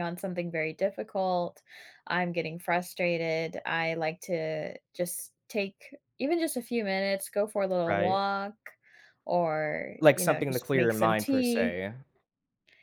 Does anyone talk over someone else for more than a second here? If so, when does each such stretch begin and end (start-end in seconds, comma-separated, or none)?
10.0-11.8